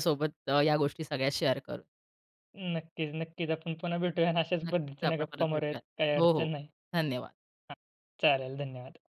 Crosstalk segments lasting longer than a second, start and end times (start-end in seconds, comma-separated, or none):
4.6-6.5